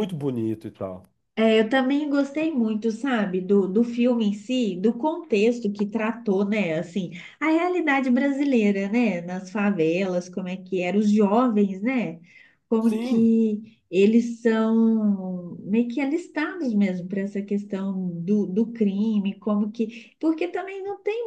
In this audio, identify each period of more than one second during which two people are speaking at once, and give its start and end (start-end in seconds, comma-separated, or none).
none